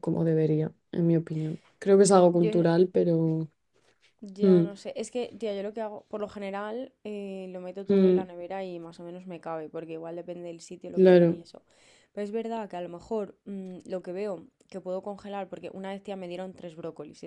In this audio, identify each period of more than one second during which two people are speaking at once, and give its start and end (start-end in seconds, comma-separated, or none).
none